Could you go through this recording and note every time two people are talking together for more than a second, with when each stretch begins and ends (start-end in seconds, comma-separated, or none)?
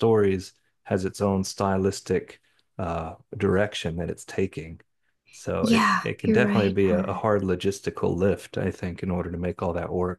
5.6-7.2